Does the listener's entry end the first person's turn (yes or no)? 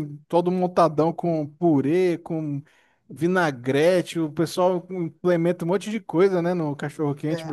yes